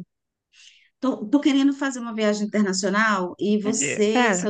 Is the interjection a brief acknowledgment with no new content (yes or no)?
yes